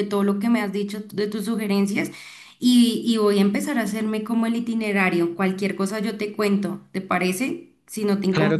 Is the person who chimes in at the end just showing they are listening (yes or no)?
no